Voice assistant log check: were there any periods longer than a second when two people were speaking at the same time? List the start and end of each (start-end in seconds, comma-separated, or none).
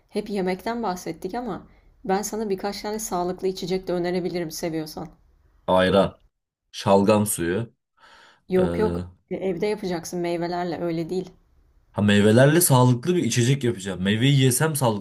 none